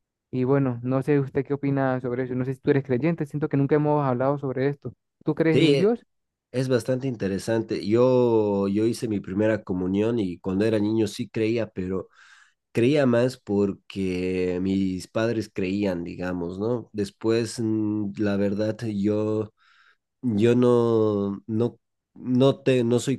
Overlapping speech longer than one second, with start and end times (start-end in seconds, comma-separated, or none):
none